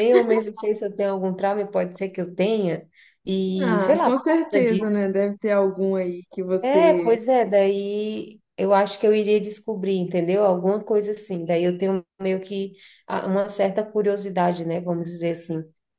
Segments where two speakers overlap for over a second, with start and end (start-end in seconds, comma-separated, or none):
3.6-5.1